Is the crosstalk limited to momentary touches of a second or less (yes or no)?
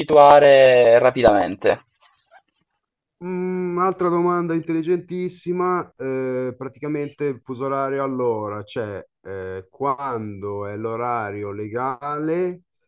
yes